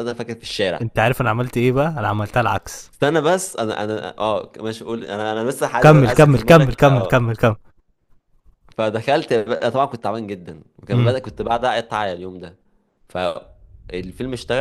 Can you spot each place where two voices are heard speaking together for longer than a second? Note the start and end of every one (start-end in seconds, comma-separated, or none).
5.8-7.2